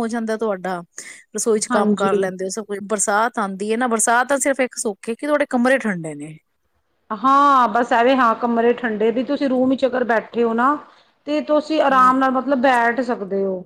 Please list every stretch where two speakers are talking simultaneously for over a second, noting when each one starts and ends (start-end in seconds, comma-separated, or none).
none